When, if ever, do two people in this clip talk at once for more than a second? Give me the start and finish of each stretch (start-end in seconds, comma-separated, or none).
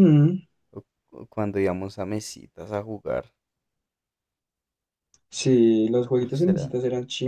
none